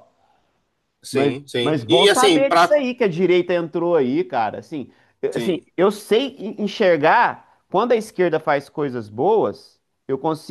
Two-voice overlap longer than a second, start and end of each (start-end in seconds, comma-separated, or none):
1.1-2.8